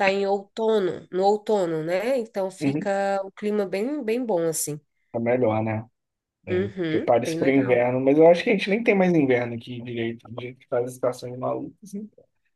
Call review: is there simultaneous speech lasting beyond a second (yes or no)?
yes